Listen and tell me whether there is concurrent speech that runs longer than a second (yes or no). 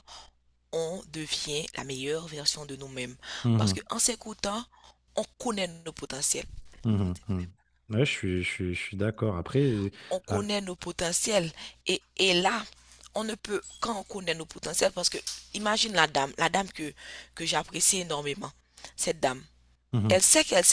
no